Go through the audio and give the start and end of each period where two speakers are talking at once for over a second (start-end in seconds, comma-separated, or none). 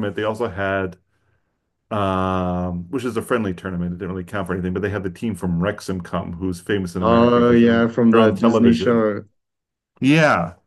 7.0-9.1